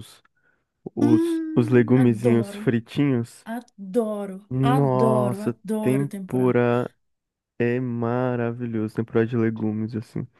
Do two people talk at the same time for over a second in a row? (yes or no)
yes